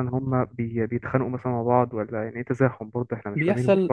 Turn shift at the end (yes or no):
yes